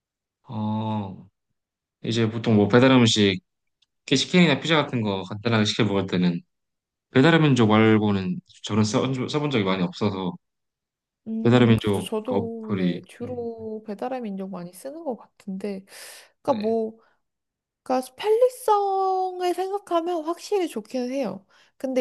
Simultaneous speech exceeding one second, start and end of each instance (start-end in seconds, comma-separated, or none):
11.4-13.5